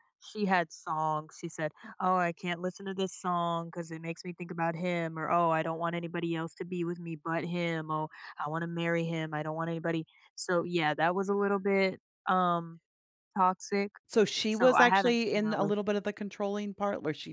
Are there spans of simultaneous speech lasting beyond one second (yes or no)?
yes